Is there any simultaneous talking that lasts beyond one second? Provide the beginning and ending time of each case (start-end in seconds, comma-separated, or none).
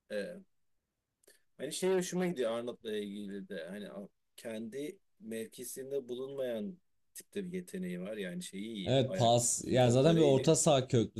8.8-10.5